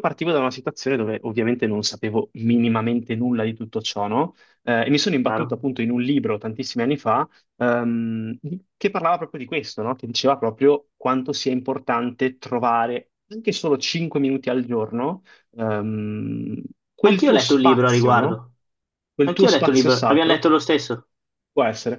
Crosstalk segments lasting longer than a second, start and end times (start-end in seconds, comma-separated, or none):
17.0-18.4, 19.2-20.4